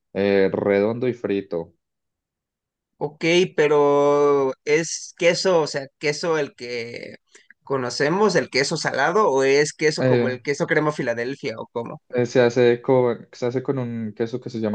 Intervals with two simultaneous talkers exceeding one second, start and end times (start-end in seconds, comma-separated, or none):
none